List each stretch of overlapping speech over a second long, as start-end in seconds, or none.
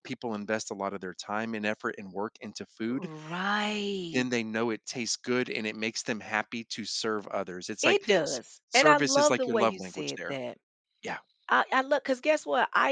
7.8-10.3